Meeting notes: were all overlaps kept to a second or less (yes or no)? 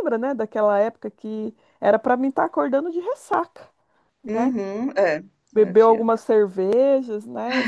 yes